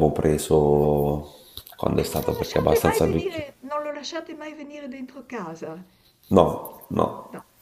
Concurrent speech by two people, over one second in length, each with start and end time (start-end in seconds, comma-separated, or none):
2.0-3.4